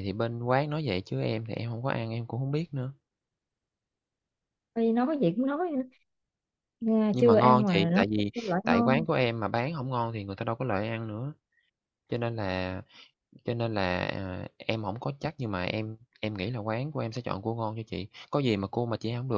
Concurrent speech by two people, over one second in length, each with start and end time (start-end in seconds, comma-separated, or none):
7.1-9.0